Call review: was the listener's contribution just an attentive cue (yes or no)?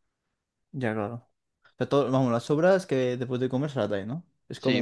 no